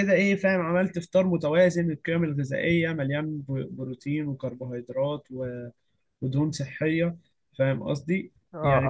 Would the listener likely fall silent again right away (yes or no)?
no